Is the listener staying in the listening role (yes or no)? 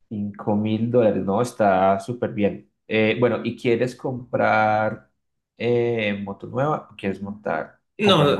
no